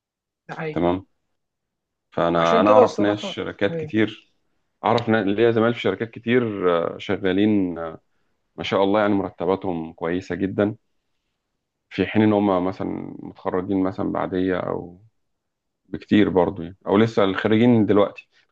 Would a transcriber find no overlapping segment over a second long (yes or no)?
no